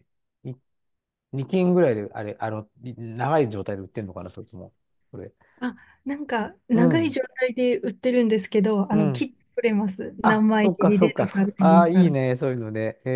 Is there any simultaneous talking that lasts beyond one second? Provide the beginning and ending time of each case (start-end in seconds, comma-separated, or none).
10.2-12.1